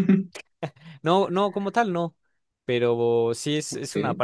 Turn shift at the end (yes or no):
no